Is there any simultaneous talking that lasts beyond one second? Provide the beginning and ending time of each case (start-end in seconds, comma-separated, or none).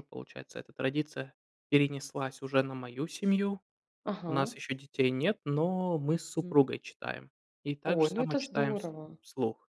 7.8-9.2